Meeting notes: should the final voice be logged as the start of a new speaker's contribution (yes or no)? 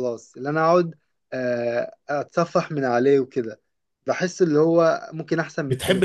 yes